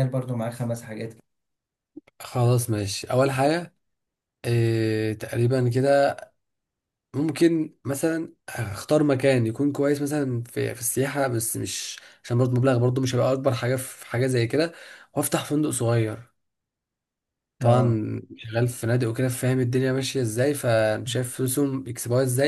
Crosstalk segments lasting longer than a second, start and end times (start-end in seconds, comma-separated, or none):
none